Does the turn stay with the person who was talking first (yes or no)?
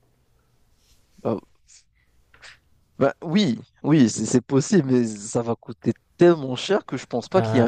no